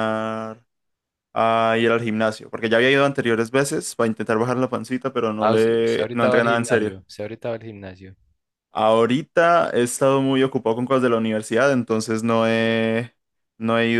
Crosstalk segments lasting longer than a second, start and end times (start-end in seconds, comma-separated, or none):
5.4-7.0